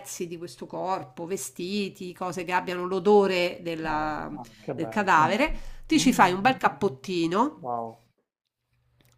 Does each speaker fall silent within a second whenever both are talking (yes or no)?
yes